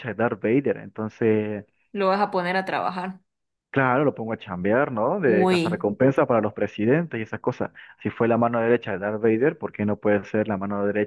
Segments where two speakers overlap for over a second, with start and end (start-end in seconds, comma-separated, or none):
none